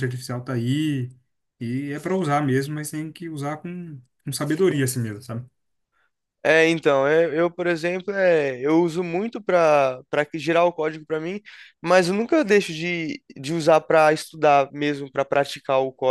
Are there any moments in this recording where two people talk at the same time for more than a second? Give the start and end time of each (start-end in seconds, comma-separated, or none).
none